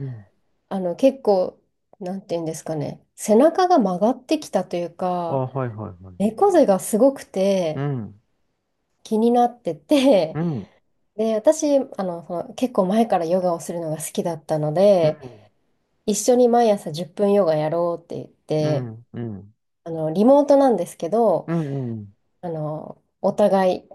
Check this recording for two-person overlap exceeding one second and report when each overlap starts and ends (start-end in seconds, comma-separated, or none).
none